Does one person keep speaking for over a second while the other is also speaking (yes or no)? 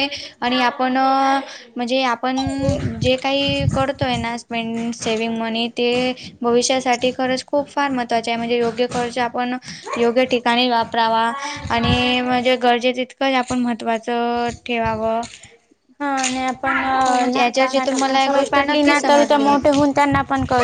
yes